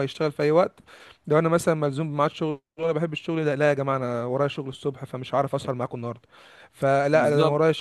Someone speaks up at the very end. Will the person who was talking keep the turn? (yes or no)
yes